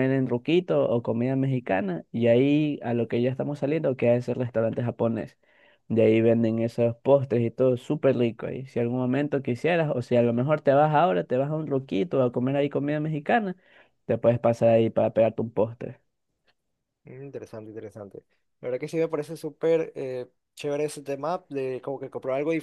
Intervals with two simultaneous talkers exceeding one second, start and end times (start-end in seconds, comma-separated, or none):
none